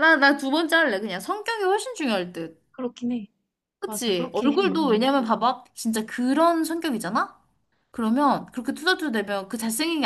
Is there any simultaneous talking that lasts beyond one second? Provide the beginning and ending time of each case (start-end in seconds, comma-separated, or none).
3.9-5.1